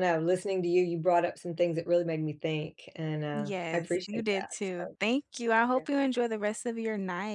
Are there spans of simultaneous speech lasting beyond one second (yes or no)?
yes